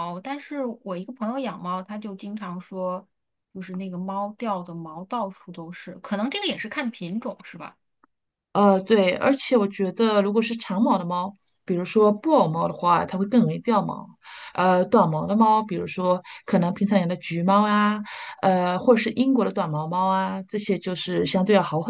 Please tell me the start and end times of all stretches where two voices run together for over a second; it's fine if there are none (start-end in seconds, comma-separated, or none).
none